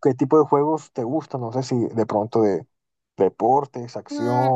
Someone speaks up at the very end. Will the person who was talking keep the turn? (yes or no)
no